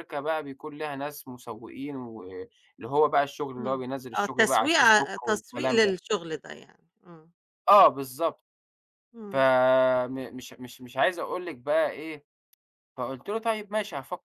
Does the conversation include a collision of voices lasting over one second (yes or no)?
yes